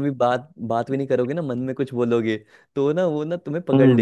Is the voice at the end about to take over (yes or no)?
no